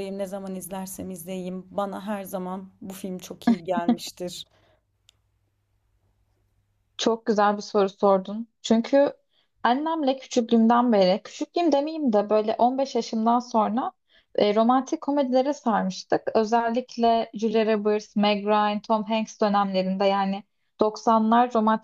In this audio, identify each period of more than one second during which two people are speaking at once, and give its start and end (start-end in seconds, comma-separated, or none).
none